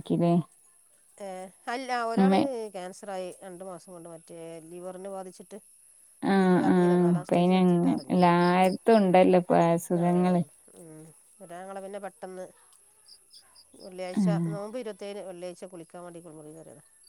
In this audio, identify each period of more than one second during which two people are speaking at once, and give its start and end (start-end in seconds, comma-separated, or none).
none